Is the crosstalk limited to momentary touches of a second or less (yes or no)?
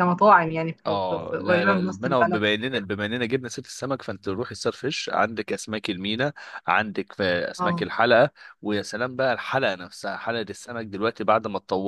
no